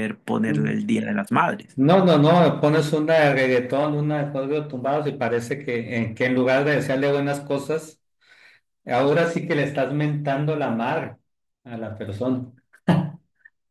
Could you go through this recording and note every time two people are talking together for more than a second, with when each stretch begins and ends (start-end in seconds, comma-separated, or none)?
none